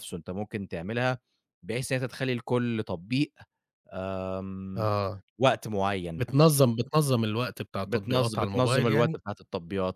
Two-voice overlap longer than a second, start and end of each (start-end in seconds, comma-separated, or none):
7.8-9.2